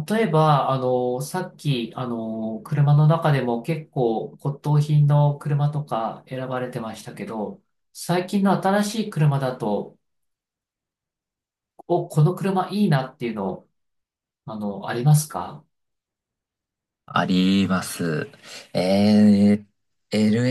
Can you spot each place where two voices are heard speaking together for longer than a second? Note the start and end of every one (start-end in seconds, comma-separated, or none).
none